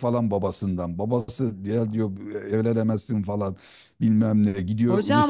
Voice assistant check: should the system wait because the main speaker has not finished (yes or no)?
no